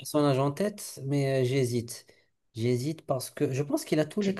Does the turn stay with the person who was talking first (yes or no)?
no